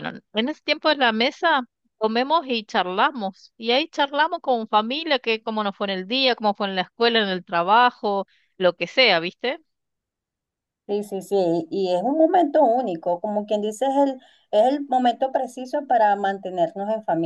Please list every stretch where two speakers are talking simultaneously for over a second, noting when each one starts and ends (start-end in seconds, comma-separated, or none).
none